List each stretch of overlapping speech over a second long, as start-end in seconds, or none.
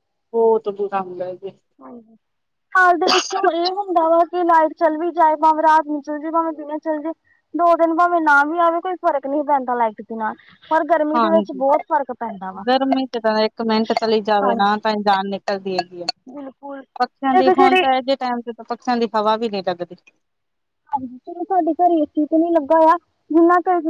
none